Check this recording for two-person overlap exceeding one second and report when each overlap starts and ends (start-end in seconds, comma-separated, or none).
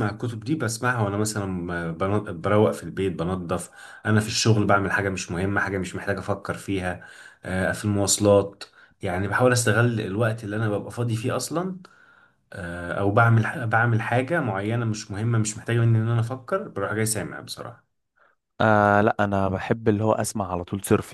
none